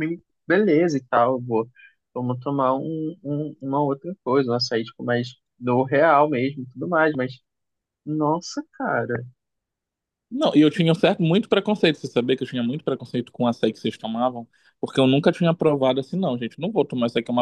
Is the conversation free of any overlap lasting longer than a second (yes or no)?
yes